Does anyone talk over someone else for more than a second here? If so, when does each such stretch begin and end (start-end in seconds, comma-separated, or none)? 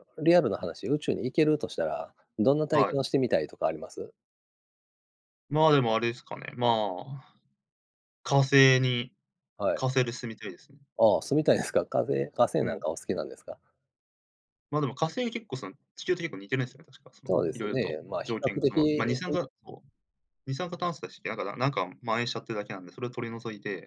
17.2-19.2